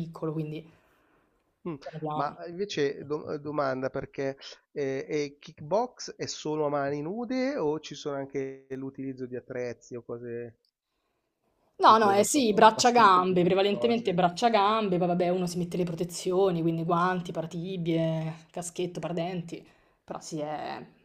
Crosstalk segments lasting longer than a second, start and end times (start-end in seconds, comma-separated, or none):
11.9-14.2